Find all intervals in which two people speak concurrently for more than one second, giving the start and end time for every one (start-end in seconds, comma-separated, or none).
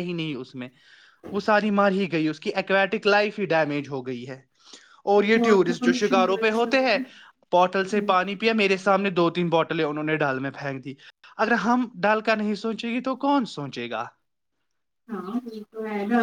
5.3-6.7